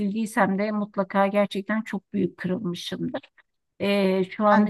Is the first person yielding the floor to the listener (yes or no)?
no